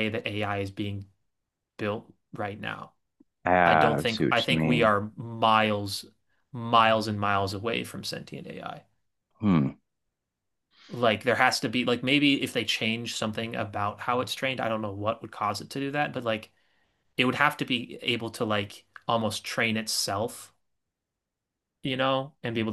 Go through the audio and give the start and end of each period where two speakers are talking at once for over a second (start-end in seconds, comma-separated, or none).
3.6-4.9